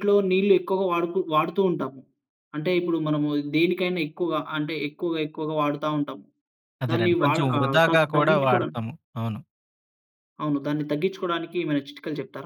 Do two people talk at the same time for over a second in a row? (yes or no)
yes